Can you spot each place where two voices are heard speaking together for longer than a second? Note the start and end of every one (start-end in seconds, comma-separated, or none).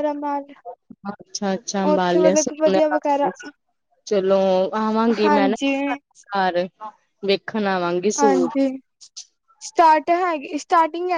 1.9-3.3